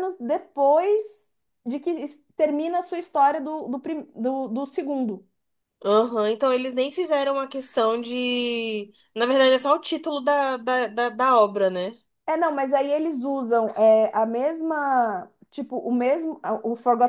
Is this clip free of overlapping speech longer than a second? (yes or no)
yes